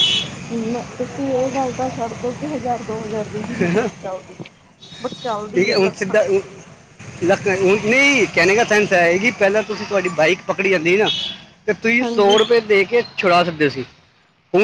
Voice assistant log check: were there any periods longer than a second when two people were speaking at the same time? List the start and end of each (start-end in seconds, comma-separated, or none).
none